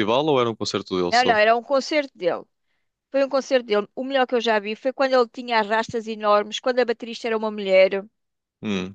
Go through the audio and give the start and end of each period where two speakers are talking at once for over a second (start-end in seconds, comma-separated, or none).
none